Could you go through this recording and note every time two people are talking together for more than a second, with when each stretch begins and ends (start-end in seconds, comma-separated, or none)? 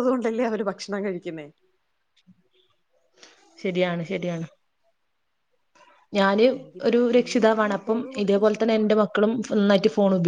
6.9-8.7